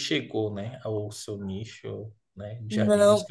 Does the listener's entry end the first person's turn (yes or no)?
yes